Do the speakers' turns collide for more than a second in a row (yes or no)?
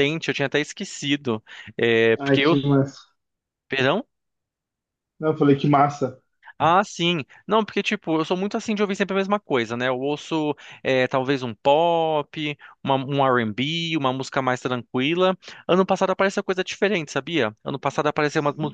no